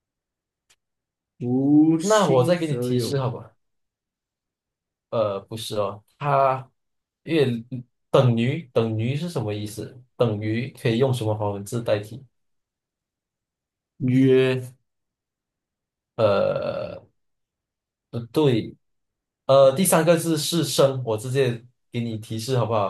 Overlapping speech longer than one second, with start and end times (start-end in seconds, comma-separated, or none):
2.0-3.2